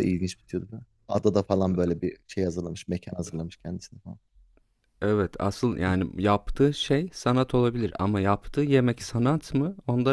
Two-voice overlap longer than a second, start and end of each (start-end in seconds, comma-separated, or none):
none